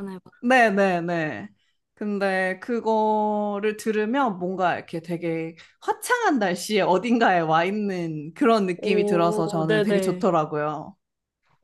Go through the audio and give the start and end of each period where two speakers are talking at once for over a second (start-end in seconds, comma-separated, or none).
8.8-10.3